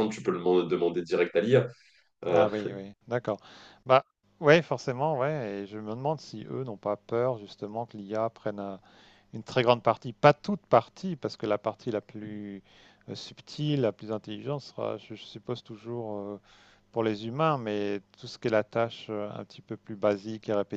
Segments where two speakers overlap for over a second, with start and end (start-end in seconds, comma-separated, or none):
none